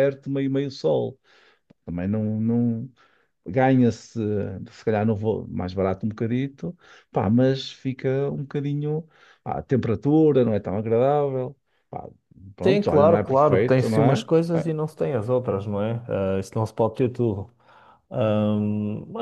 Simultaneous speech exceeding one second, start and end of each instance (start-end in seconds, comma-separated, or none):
12.6-14.7